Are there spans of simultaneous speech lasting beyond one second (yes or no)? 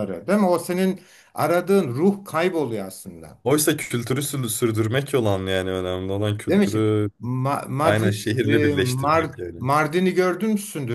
yes